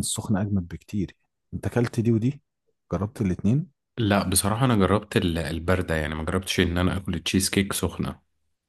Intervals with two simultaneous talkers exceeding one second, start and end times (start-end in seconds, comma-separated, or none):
none